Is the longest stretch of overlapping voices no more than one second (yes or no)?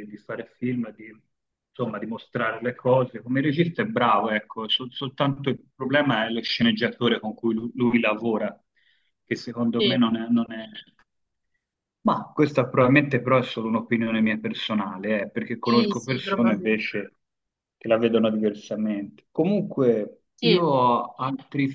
no